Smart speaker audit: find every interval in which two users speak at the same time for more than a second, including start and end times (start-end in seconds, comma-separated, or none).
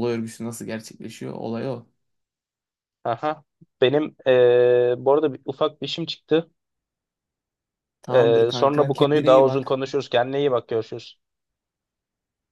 8.1-9.7